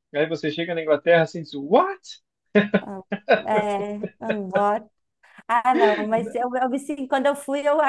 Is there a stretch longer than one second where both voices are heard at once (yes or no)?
no